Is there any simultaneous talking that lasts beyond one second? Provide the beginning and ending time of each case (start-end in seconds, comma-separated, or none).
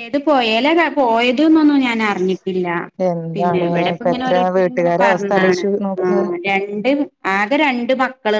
3.4-5.6